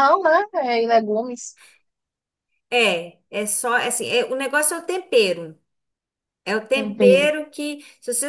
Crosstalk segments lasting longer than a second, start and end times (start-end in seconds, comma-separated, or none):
none